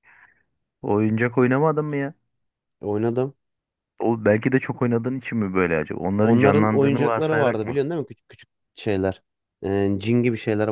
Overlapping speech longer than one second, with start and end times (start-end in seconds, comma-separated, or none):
6.2-7.8